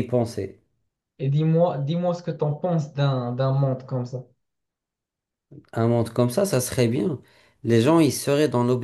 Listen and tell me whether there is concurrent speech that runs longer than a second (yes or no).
no